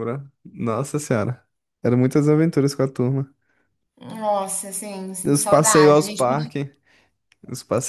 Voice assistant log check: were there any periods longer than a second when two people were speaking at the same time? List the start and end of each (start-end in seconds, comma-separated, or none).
5.2-6.5